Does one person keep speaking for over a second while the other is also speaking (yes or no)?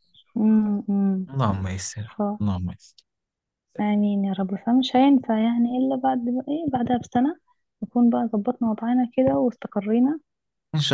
no